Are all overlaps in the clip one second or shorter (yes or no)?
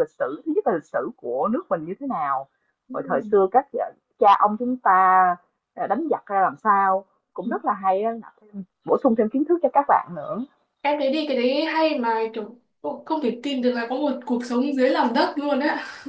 yes